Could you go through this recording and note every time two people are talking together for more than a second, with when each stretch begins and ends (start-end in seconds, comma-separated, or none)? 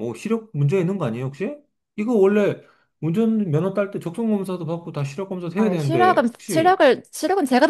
5.5-6.8